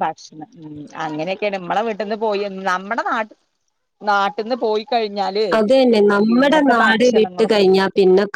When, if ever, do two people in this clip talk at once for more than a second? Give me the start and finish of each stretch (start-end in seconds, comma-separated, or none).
6.3-7.7